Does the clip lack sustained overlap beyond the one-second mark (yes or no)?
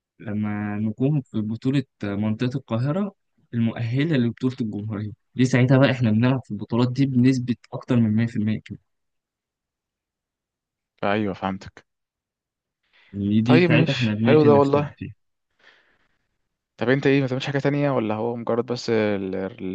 no